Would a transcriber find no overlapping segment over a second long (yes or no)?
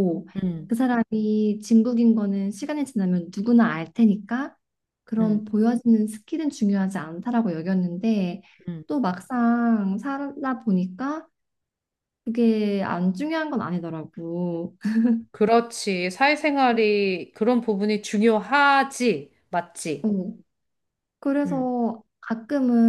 yes